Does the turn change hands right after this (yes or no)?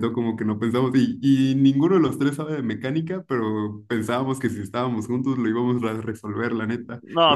no